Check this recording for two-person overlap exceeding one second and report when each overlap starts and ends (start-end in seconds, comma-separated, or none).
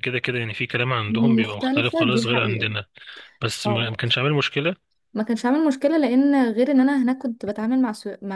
1.4-2.7